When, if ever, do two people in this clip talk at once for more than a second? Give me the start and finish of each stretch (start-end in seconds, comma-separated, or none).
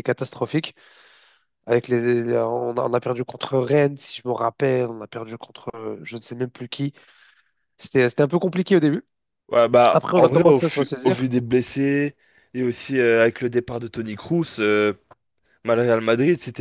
9.9-11.3